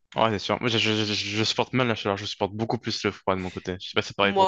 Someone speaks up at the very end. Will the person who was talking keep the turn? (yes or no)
no